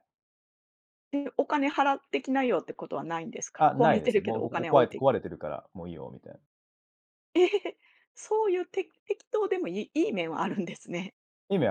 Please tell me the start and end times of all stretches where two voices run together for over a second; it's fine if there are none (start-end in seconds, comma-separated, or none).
3.6-5.0